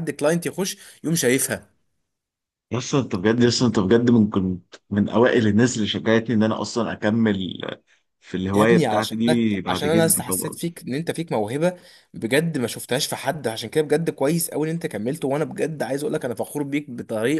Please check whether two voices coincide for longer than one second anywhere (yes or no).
yes